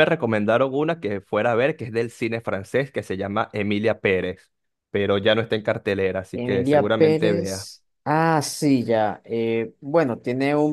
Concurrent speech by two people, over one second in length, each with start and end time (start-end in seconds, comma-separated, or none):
6.3-7.7